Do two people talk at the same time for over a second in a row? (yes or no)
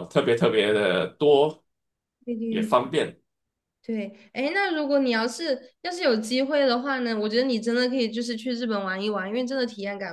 no